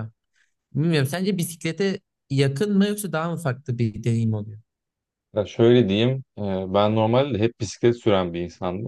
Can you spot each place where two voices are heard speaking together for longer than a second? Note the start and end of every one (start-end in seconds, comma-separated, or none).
none